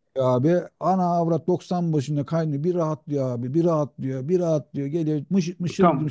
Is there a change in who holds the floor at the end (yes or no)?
yes